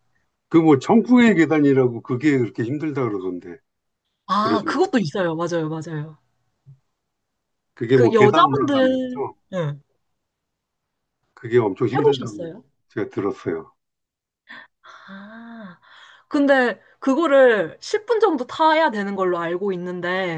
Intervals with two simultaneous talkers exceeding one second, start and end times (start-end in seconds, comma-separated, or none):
7.9-9.3